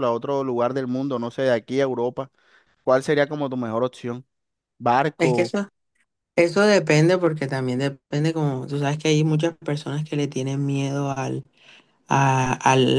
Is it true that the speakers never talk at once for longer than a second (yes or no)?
yes